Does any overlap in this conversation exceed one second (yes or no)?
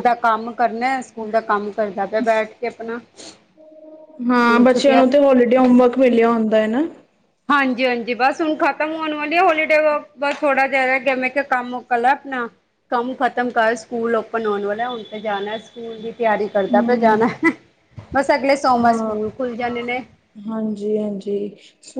no